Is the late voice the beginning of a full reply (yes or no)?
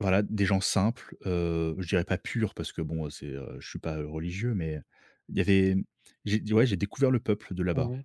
yes